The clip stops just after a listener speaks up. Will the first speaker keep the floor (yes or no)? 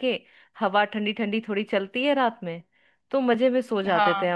yes